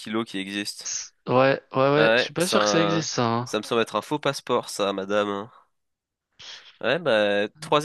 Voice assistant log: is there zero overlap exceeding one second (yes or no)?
no